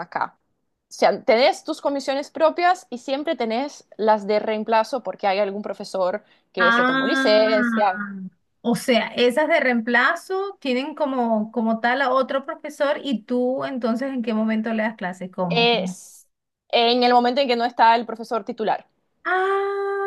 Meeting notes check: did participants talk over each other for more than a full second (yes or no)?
yes